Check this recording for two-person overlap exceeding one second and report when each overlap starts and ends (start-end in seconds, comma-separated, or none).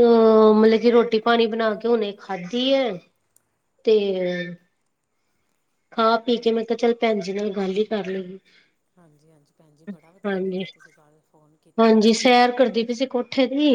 none